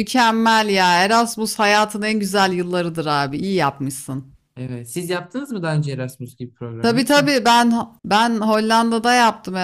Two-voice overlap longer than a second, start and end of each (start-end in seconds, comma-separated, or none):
none